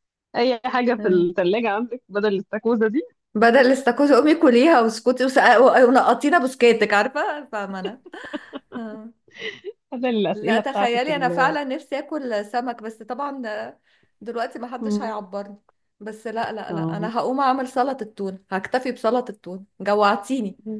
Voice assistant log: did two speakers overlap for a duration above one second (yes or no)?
yes